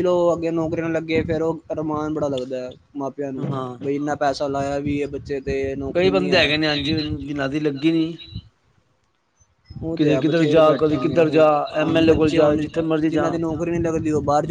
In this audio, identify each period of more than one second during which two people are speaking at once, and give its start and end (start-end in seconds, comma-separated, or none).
9.9-11.5